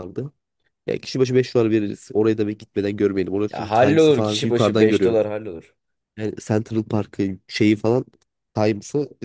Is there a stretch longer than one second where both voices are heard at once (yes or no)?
yes